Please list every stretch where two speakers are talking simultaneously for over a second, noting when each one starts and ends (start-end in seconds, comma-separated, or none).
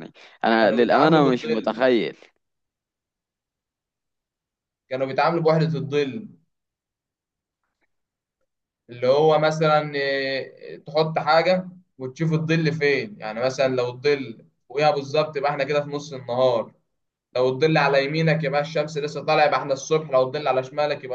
0.6-1.9